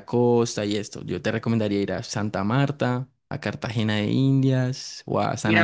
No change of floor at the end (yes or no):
no